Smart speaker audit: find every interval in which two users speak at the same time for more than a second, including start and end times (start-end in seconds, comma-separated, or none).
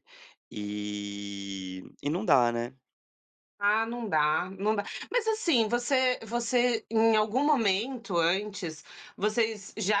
none